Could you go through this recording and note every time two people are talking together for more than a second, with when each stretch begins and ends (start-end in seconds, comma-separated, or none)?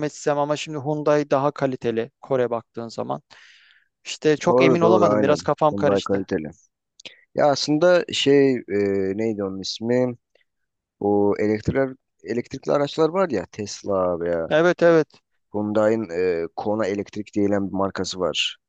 4.5-6.3